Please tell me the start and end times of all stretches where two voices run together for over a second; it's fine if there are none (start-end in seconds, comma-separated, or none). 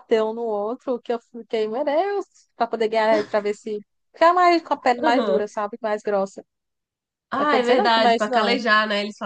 7.4-8.6